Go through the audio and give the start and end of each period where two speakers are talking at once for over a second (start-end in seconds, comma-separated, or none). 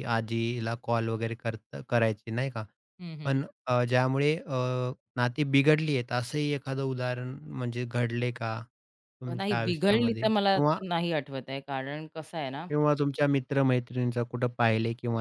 9.4-10.8